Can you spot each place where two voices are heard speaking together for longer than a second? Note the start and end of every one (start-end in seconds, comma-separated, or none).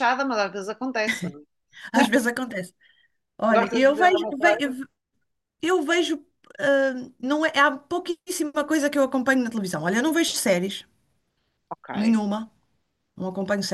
3.5-4.8